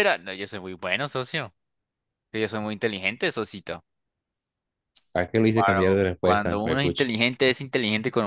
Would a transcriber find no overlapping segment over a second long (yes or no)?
no